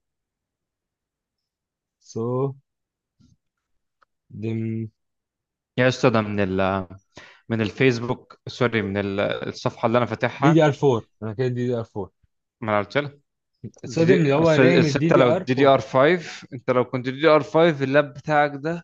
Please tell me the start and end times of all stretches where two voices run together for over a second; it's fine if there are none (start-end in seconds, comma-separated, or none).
13.9-15.8